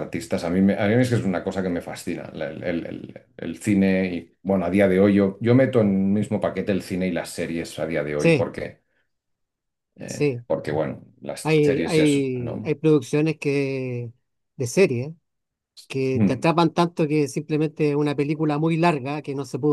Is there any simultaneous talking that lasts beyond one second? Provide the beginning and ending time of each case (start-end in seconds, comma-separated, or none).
11.4-12.7